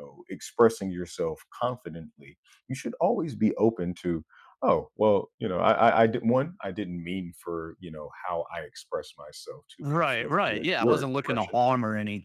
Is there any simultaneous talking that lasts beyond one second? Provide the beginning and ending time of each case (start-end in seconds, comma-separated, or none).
9.8-11.6